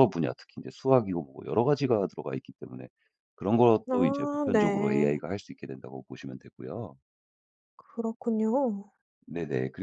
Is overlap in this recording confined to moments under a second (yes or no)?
no